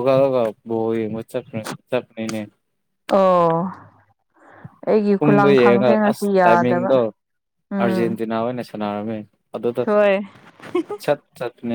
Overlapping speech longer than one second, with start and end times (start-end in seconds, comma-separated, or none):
5.2-6.9